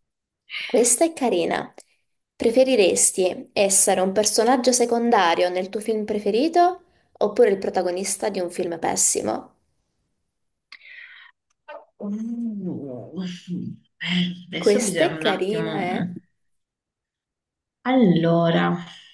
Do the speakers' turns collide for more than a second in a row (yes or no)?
yes